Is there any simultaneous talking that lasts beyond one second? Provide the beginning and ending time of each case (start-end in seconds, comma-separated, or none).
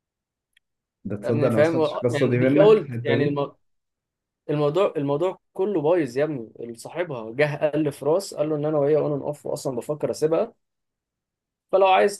1.2-3.4